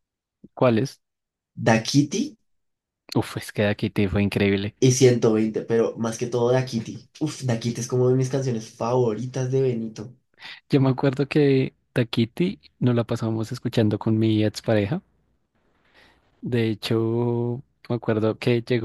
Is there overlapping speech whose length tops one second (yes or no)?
no